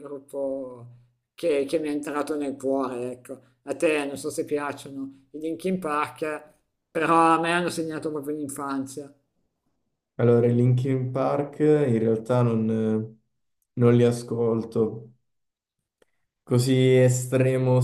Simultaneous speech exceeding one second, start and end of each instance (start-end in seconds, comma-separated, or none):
none